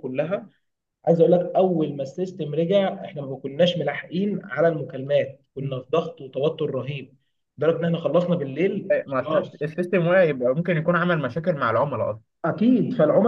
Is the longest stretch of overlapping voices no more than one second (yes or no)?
yes